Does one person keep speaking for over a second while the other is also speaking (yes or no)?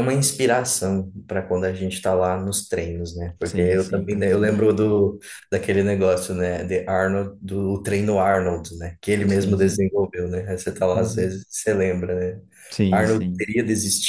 yes